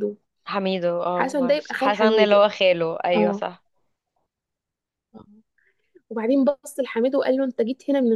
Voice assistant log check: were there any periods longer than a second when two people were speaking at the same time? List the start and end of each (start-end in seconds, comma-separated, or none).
1.2-2.4